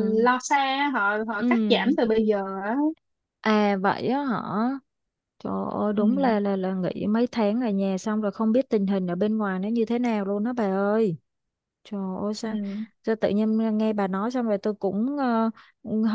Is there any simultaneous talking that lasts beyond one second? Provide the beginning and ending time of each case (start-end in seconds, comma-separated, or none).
none